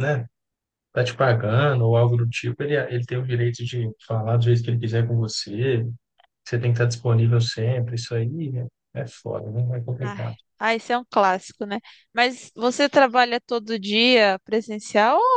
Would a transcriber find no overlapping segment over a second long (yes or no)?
yes